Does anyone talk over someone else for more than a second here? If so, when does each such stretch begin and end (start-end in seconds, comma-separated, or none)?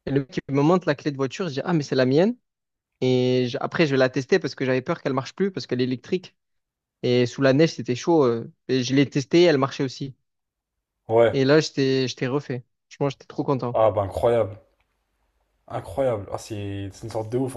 none